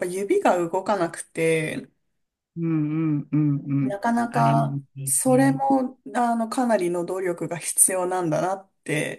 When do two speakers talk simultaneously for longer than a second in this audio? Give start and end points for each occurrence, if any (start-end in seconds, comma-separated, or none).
3.8-5.6